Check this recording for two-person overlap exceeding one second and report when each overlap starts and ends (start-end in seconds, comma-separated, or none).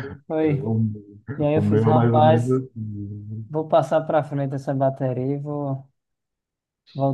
1.4-2.6